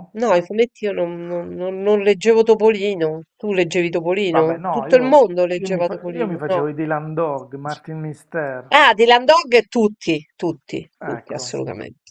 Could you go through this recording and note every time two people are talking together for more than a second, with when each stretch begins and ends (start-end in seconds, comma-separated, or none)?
4.2-6.7